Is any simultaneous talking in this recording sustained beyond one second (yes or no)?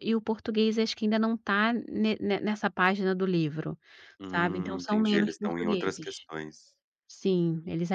yes